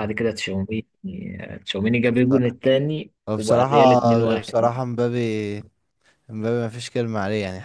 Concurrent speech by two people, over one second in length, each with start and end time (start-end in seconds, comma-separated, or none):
3.3-4.7